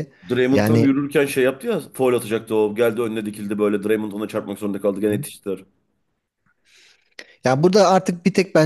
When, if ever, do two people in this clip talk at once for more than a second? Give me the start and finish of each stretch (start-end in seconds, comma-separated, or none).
none